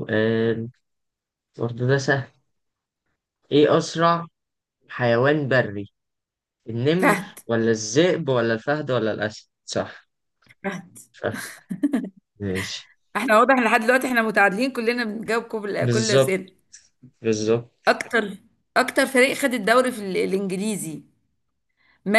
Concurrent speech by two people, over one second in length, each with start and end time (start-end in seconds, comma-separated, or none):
none